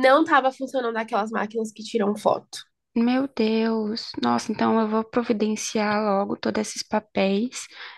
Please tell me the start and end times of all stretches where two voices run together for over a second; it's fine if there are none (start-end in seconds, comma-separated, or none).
none